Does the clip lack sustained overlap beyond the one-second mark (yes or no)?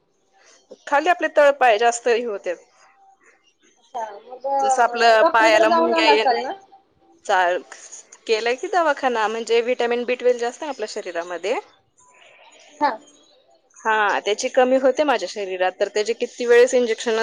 no